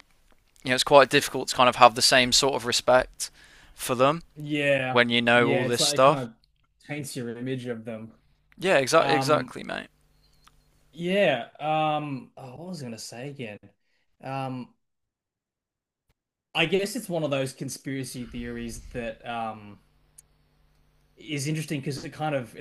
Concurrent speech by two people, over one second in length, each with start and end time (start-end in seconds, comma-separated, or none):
4.9-6.3